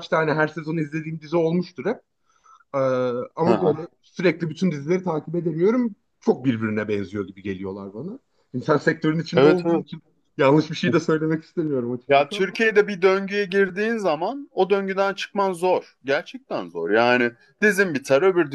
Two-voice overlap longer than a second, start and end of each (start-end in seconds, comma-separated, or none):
none